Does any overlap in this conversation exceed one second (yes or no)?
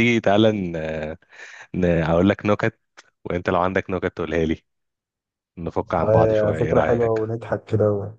yes